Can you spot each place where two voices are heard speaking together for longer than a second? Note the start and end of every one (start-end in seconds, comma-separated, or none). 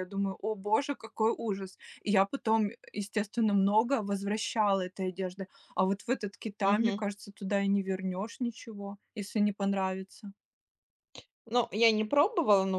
none